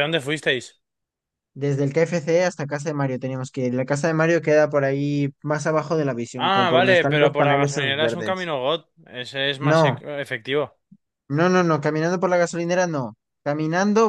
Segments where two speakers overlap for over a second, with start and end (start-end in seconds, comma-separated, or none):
6.3-8.5